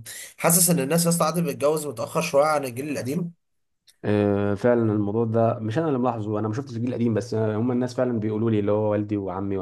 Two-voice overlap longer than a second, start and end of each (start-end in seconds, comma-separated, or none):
none